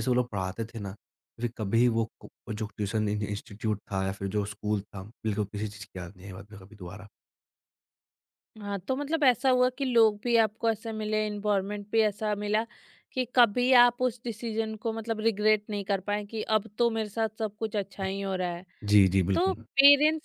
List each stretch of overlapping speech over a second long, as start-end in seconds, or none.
none